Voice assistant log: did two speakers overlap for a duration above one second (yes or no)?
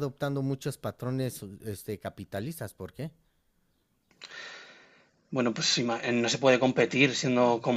no